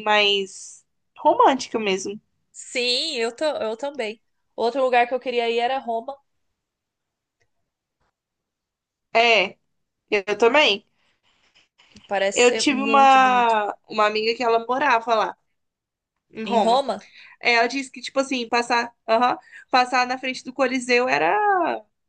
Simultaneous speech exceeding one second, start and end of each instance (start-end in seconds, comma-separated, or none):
12.3-13.6